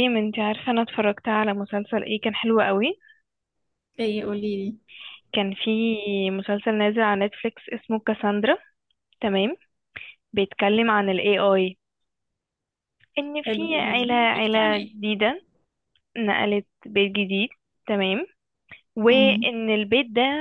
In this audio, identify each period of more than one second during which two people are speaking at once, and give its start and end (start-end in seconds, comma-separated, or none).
13.4-14.9